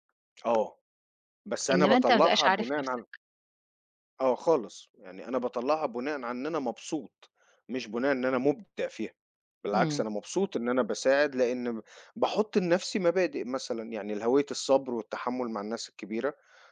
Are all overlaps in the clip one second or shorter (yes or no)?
no